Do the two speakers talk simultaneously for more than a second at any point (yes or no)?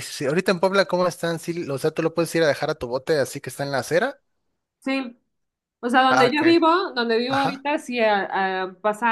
no